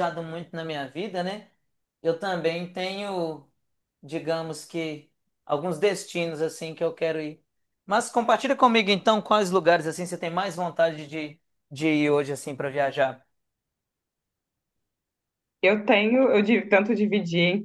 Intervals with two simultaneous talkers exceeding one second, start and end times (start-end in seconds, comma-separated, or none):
none